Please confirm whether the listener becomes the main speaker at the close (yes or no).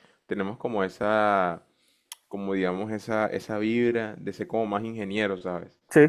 no